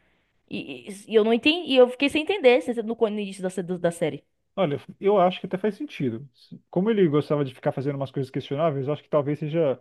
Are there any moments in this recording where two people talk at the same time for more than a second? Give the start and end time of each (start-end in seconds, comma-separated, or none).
none